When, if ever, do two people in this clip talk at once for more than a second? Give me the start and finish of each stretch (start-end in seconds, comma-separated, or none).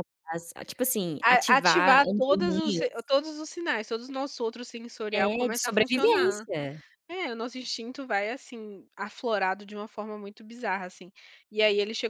1.2-3.0, 5.1-6.5